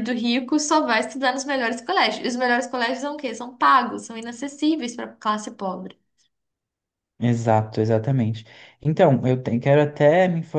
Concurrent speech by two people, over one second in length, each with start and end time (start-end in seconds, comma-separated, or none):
none